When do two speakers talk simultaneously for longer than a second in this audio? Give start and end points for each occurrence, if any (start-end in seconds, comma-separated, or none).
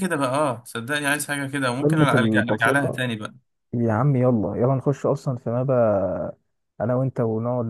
1.8-3.0